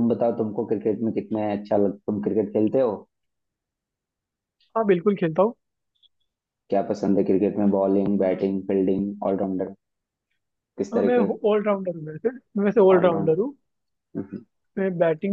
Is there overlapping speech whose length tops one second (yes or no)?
no